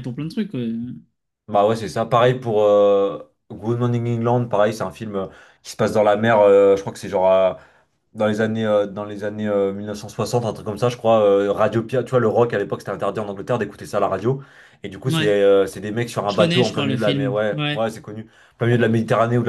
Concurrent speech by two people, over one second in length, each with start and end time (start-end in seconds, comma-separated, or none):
16.3-17.8